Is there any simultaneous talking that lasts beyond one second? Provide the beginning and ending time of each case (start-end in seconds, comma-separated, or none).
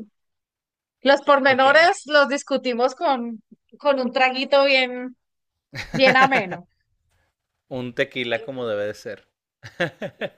none